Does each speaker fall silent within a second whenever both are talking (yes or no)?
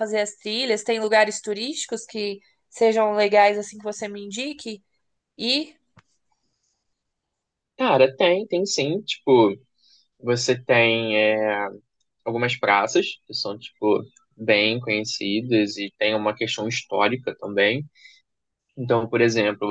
yes